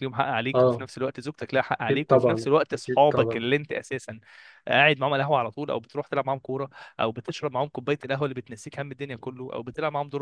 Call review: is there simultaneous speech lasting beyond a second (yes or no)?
yes